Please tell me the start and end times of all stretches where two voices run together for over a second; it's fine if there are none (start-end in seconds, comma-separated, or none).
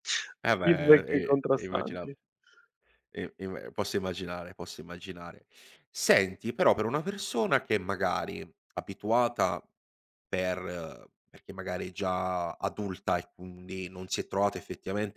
0.6-2.1